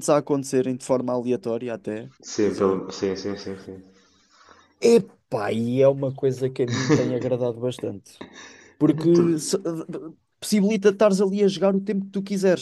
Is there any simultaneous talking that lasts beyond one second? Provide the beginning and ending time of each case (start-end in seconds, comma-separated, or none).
none